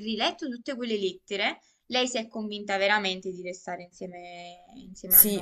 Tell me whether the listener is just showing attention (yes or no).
no